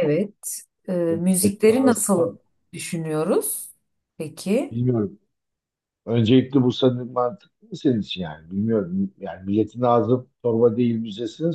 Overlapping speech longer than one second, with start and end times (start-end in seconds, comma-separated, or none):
1.1-2.3